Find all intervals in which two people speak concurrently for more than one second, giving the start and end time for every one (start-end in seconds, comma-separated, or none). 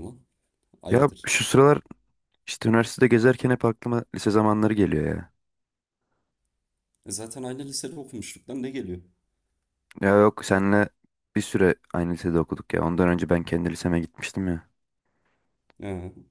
none